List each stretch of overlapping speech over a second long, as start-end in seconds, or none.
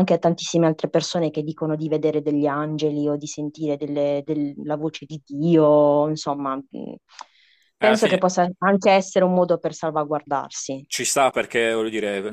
none